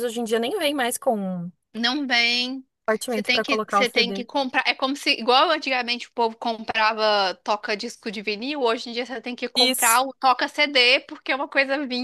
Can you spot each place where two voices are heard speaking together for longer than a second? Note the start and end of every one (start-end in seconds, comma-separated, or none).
3.1-4.3